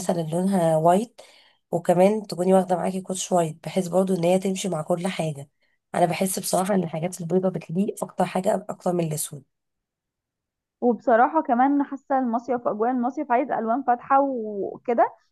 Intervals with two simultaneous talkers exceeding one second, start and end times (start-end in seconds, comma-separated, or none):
none